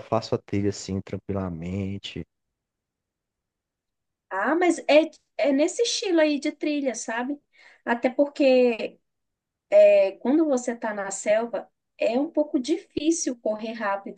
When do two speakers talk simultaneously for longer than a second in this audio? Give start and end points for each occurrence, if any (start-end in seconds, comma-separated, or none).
none